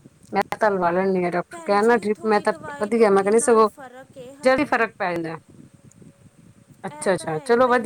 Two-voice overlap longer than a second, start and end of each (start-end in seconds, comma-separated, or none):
1.5-3.7